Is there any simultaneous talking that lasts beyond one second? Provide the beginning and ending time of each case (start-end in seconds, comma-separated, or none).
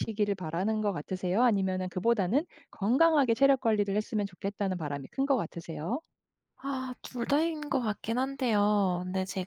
none